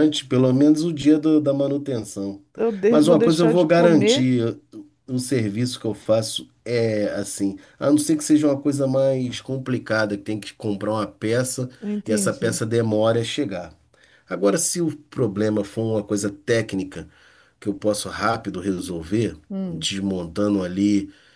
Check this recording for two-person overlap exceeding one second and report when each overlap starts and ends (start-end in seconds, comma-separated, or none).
2.9-4.3